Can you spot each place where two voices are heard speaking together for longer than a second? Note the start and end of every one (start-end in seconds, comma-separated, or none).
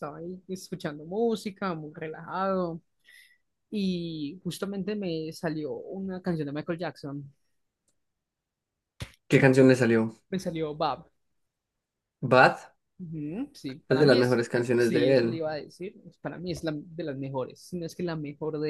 13.9-15.4